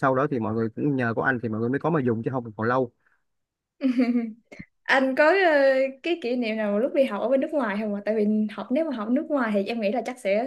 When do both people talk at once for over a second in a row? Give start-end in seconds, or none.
none